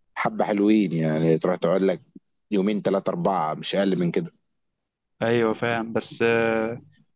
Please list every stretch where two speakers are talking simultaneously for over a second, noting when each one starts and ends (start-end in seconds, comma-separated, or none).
none